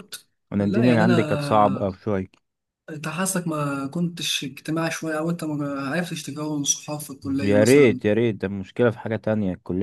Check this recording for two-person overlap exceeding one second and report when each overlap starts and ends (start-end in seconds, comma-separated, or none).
0.5-1.9